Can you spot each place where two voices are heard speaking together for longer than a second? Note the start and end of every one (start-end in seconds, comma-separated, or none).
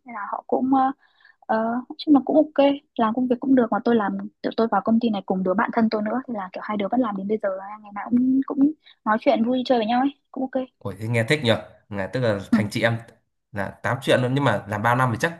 none